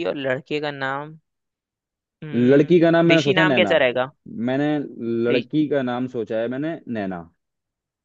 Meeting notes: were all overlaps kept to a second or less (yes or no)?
no